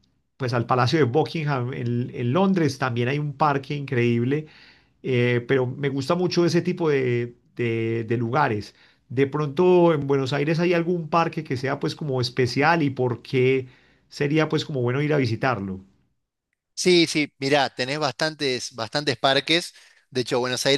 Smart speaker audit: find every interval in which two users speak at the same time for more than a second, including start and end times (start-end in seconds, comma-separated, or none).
none